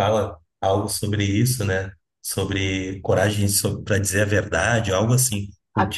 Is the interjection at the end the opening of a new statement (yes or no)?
yes